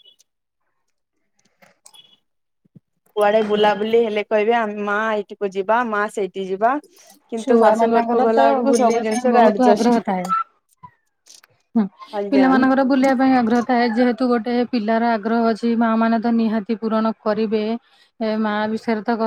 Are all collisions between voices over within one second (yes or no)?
no